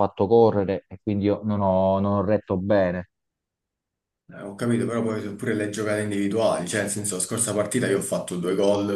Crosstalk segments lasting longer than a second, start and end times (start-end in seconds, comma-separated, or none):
none